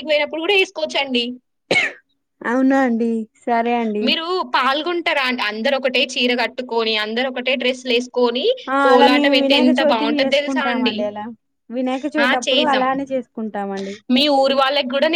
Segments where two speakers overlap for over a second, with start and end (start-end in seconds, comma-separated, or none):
8.8-10.9